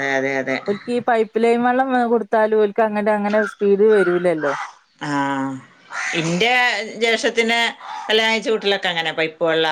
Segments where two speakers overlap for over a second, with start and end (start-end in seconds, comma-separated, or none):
none